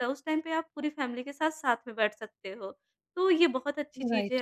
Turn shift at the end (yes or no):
no